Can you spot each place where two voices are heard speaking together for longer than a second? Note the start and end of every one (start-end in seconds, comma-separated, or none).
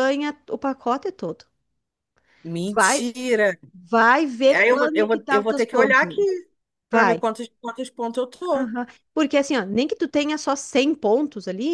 4.5-6.2